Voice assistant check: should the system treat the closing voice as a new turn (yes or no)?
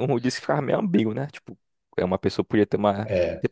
no